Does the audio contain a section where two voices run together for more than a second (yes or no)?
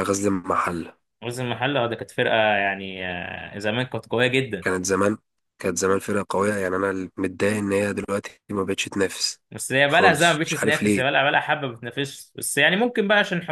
yes